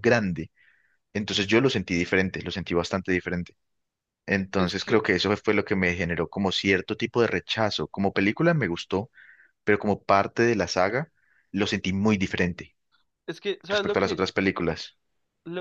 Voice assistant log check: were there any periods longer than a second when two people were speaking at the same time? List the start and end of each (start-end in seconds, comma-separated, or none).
none